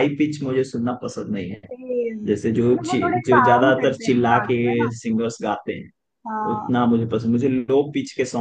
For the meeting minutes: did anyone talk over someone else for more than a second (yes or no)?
yes